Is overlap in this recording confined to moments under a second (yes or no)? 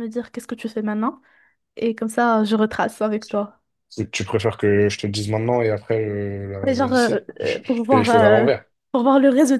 no